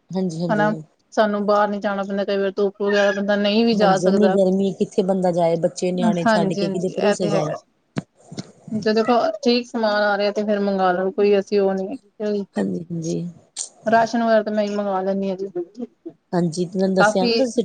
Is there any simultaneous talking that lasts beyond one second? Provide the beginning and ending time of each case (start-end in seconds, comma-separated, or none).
6.3-7.5